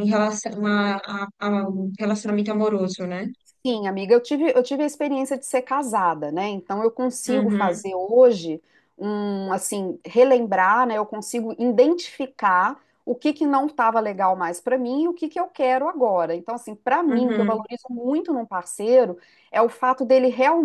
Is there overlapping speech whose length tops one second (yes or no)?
no